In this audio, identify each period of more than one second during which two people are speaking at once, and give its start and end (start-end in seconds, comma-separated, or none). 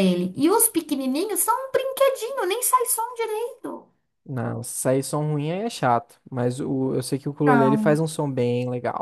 none